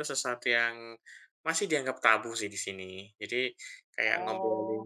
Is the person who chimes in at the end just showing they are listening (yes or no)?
yes